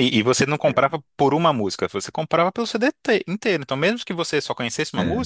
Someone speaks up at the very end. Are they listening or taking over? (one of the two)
listening